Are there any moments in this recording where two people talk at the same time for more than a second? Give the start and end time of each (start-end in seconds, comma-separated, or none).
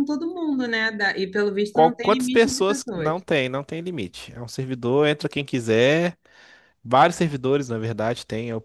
1.7-3.1